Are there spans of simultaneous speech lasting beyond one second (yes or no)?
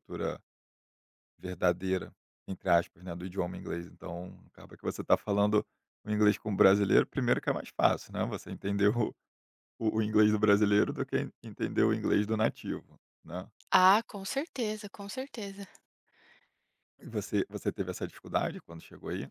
no